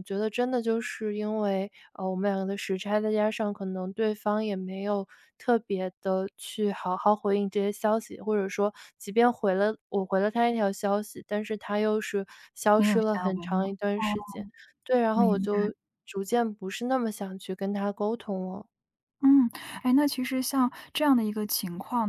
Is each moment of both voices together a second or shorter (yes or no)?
no